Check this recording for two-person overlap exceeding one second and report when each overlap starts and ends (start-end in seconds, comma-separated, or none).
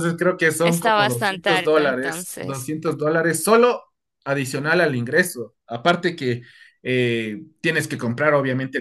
0.6-2.7